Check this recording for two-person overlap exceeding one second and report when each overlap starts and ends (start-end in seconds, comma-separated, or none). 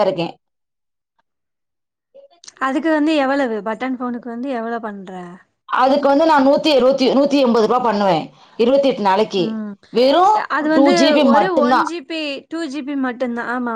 none